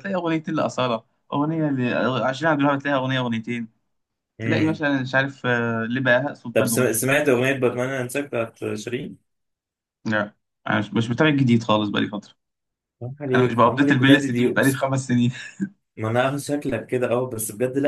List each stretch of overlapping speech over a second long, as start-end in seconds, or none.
13.3-14.8